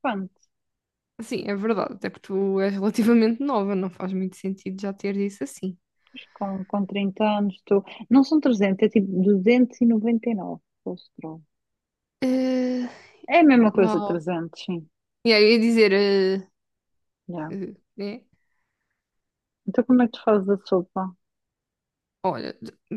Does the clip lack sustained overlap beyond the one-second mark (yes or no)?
yes